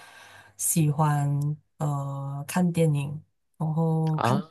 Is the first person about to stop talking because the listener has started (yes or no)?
no